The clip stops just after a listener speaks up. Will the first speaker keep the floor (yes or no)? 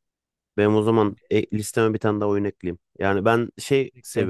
yes